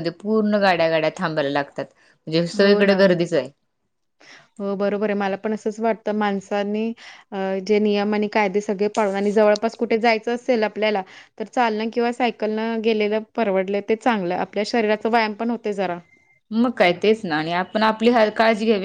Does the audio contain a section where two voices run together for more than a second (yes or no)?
no